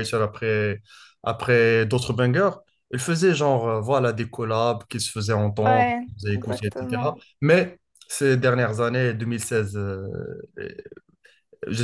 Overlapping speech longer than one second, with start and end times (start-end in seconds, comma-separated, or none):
5.6-7.2